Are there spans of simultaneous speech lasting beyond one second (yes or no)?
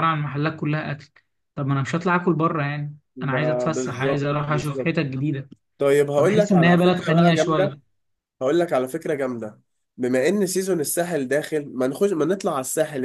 yes